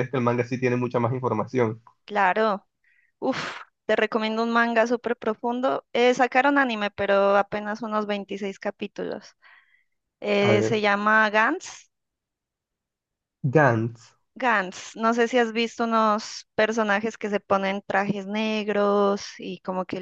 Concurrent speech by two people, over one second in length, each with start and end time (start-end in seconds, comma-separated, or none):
none